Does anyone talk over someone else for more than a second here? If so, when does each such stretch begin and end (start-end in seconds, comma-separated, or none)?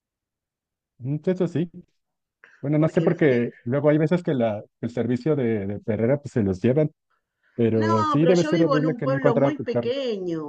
7.7-9.9